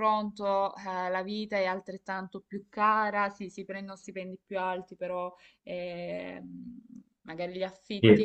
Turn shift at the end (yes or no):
no